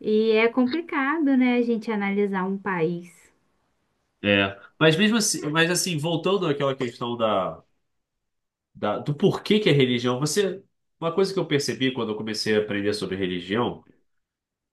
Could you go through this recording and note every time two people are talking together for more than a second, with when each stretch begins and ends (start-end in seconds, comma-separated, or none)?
none